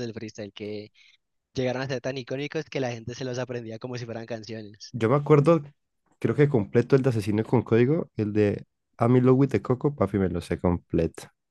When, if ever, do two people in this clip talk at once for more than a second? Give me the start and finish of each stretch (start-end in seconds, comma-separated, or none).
none